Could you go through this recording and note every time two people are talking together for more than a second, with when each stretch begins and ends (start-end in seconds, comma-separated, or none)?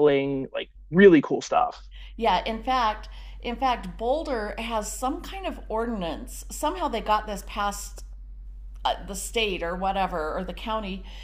none